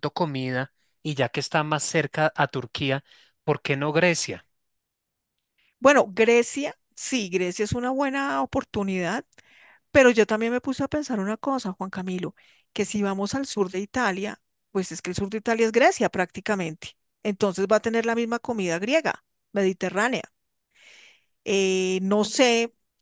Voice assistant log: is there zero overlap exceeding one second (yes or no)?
yes